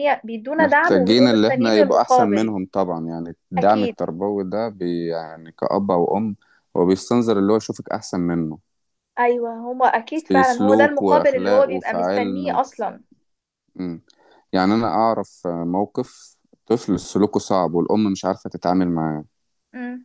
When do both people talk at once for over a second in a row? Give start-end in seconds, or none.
0.6-2.5, 10.1-12.9